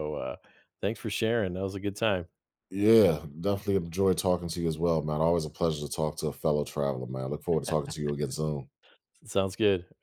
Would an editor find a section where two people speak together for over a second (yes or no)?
no